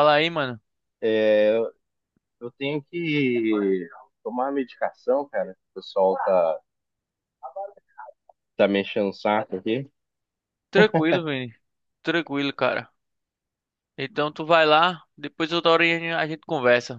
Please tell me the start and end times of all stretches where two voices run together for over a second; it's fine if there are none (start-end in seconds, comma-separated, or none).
none